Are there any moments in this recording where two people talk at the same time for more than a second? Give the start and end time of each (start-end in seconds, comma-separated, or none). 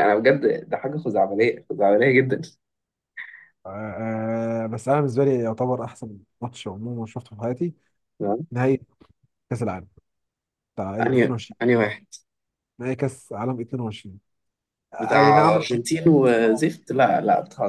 15.0-16.6